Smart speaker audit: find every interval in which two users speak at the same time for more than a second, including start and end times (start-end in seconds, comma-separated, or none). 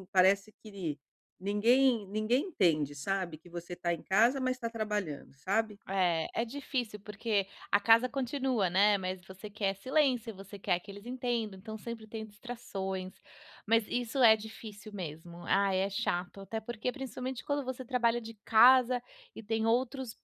none